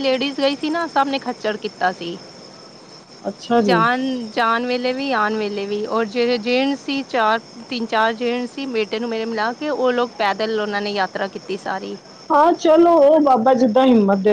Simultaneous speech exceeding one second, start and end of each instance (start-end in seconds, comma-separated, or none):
none